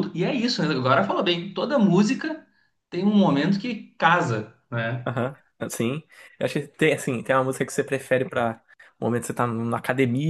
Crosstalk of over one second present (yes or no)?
no